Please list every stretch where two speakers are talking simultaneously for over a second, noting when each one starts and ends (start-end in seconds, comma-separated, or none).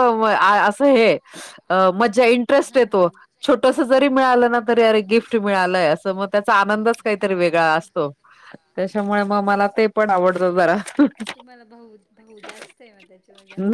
6.8-8.0